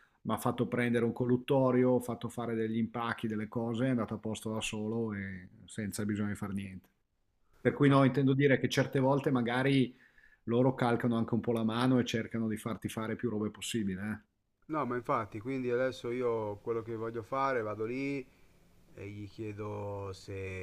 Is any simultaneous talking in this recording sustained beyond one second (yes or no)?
no